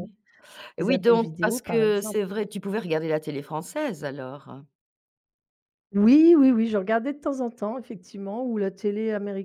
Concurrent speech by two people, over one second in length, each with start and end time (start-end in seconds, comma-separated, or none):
0.8-2.2